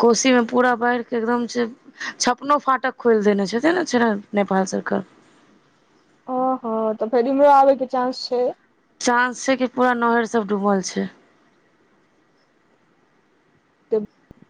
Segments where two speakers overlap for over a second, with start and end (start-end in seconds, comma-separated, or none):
none